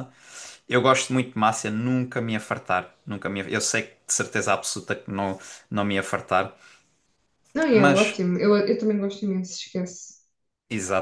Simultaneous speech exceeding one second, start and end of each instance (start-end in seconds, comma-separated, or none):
none